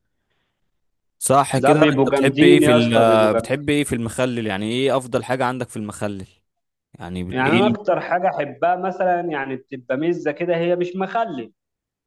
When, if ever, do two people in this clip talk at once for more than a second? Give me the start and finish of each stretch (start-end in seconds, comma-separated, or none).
1.6-3.7